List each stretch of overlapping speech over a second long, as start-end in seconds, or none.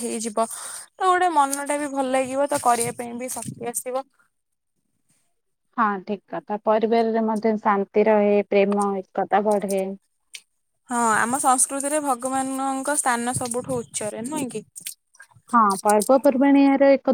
none